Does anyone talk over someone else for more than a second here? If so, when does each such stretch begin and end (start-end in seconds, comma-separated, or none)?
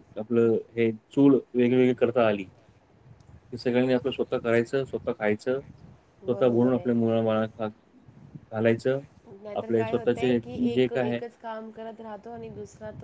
none